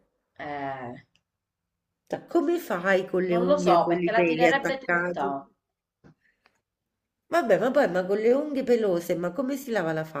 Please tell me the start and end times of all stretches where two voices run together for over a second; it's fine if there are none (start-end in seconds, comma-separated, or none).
3.3-5.5